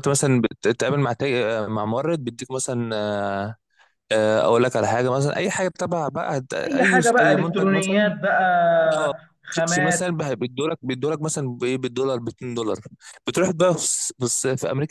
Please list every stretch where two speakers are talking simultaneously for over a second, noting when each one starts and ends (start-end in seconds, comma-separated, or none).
6.6-8.1